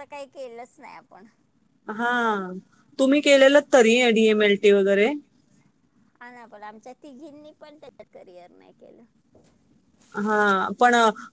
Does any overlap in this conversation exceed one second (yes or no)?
no